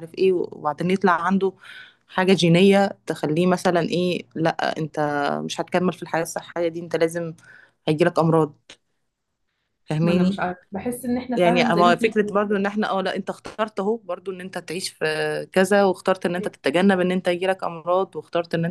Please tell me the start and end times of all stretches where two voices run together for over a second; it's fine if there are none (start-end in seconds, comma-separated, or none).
11.4-12.7